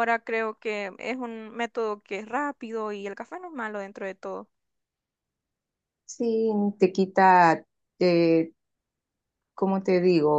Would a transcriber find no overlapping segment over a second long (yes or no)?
yes